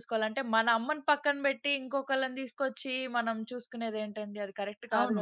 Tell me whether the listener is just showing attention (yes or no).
no